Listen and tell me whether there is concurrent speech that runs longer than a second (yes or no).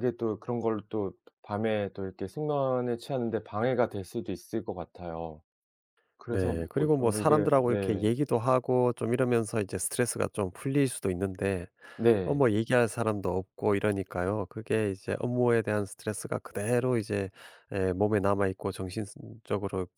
yes